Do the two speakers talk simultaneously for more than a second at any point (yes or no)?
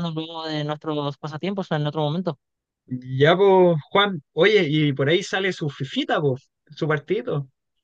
no